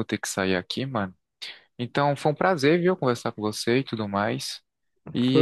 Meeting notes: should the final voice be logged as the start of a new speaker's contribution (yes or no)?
yes